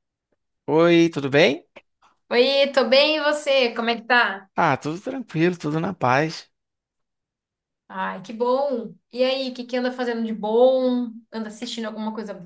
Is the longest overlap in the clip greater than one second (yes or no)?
no